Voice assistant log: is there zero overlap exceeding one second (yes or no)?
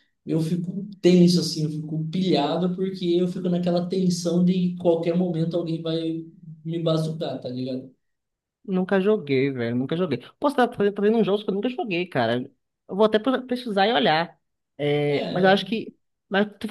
yes